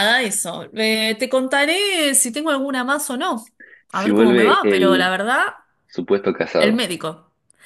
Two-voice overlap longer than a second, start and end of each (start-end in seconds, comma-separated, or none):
3.9-5.1